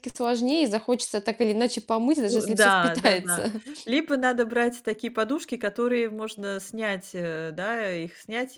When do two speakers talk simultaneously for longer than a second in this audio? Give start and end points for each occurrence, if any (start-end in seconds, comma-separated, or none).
2.3-3.5